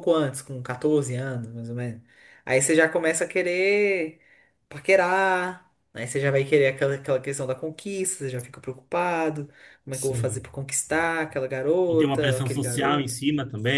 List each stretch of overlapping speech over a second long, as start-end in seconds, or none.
11.9-13.2